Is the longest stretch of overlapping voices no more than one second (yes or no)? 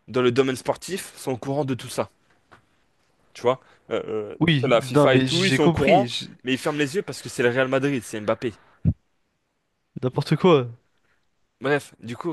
no